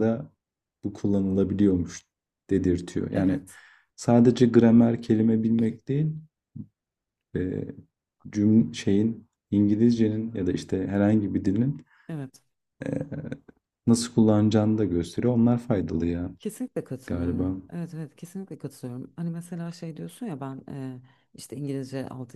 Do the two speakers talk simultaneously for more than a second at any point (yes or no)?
no